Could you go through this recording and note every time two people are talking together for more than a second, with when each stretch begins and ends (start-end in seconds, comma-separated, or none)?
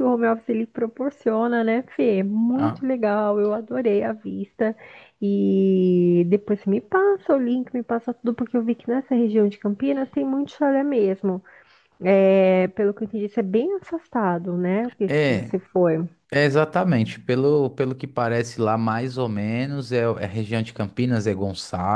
none